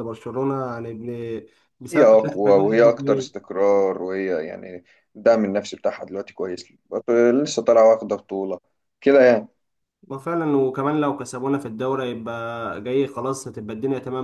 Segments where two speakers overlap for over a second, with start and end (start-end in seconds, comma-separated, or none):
1.9-3.3